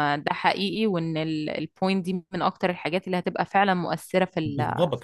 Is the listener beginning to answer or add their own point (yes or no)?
yes